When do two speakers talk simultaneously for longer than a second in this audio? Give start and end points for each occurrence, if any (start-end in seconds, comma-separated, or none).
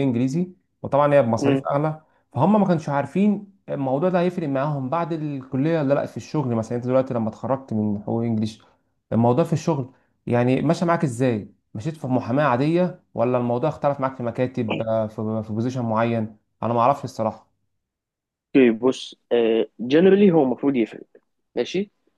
none